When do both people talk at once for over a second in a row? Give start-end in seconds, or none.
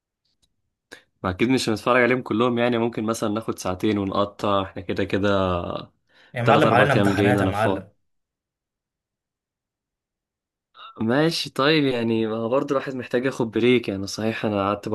6.4-7.8